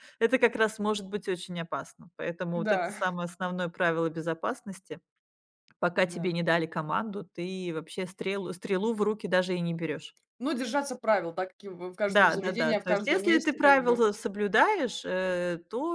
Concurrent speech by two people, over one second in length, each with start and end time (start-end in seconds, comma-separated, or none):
12.1-14.0